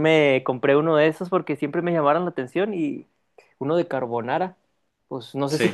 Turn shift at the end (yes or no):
no